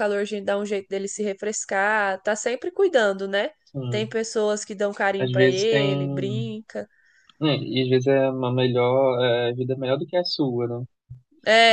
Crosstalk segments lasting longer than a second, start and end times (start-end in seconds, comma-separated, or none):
5.2-6.5